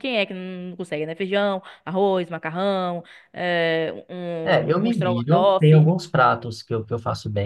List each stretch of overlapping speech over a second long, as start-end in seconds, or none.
4.4-5.9